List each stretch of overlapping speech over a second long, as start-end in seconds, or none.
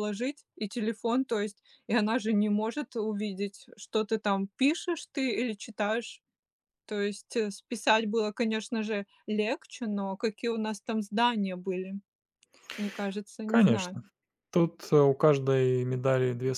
none